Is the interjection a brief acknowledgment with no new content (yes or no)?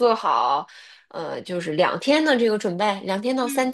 no